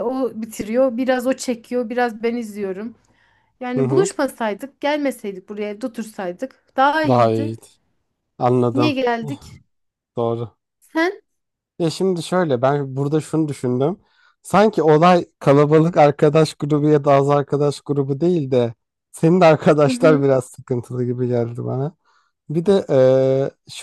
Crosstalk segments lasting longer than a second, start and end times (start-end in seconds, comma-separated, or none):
none